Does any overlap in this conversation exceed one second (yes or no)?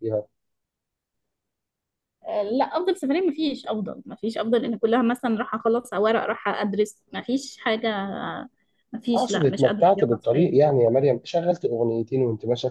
yes